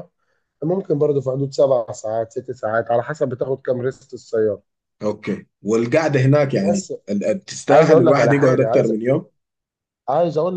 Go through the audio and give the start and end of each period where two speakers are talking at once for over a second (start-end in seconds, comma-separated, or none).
7.7-8.9